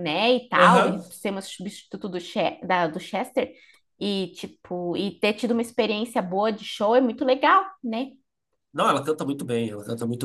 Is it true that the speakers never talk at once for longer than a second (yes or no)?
yes